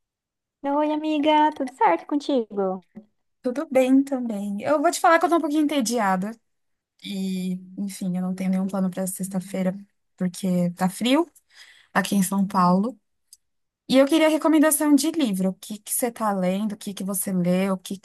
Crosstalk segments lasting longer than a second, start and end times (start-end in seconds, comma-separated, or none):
none